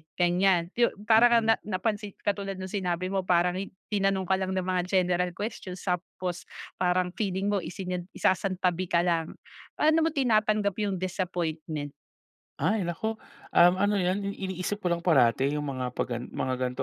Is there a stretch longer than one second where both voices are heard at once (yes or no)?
no